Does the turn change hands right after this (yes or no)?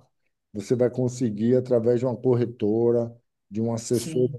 no